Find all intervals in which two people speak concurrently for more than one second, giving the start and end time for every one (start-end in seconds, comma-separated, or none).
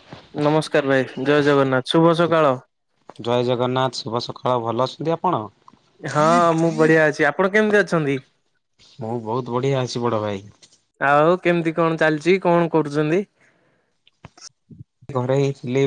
none